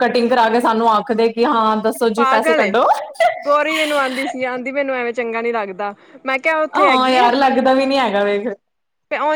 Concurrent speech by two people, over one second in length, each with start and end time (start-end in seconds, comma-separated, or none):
none